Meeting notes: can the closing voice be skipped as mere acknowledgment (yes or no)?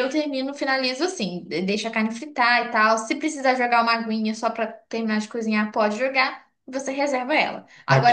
no